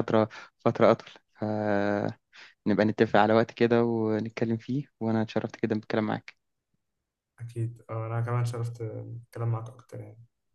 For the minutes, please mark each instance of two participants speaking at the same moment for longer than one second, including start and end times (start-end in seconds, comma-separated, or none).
none